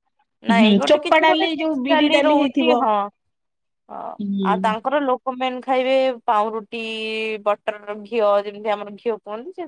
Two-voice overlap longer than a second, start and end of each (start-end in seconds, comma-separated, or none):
0.6-2.7